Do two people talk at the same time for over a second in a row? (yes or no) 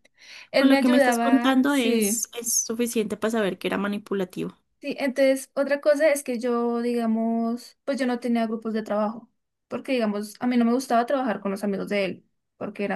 yes